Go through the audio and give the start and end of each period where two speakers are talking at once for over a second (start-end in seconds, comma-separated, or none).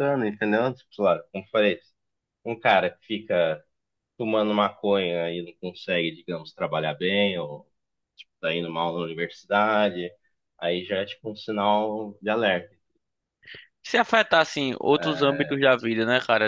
none